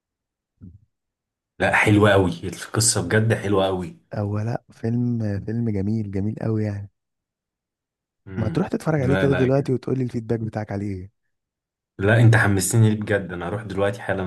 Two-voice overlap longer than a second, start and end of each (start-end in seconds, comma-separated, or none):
8.4-9.7